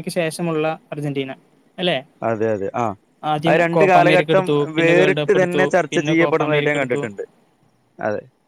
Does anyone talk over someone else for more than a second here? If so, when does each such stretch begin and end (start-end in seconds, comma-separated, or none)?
3.5-7.0